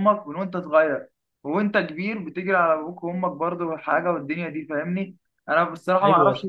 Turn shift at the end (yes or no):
no